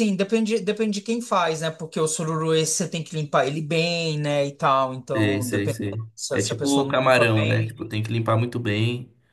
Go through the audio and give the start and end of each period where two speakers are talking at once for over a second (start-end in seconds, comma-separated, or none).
5.1-7.9